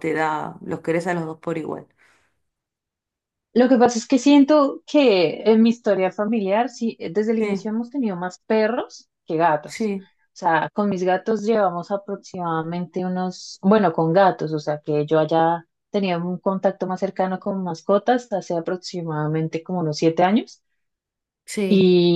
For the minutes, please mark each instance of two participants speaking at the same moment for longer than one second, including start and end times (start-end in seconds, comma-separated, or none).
none